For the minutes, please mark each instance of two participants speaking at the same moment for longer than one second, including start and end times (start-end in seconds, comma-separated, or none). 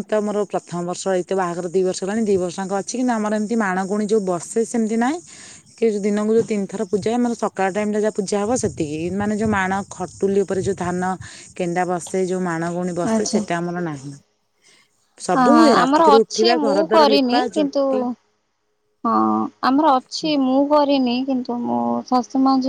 15.4-18.1